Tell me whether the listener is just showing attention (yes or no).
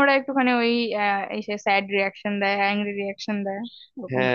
no